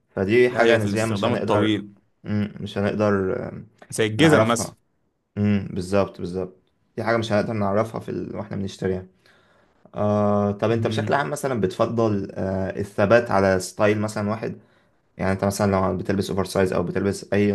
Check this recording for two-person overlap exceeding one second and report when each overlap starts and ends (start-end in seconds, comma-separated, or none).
0.5-1.8